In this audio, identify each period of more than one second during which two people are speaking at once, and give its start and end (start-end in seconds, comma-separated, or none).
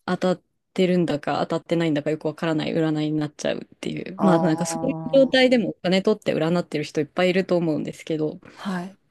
4.2-5.5